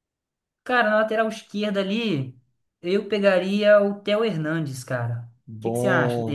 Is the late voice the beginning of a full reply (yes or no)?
yes